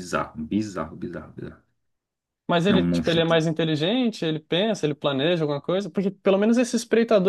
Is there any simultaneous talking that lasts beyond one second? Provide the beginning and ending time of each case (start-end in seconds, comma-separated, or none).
none